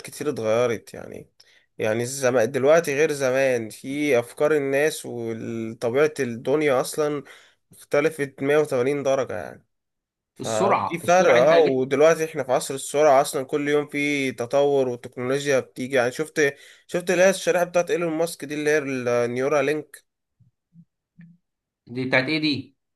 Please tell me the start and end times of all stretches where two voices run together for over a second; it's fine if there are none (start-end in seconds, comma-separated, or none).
10.4-11.8